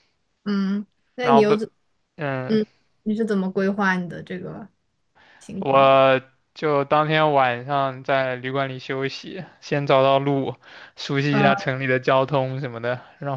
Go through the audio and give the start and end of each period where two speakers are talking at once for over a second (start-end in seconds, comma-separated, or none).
none